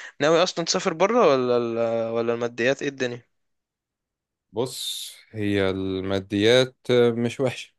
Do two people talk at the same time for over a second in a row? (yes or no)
no